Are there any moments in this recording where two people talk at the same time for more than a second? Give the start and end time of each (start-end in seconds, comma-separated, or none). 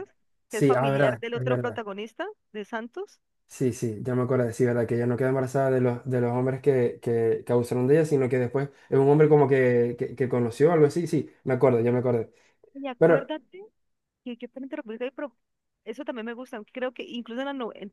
0.5-1.8